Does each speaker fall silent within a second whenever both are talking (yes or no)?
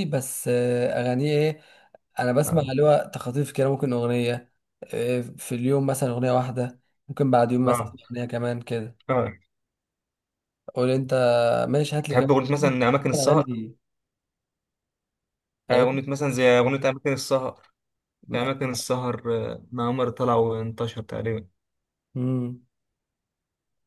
yes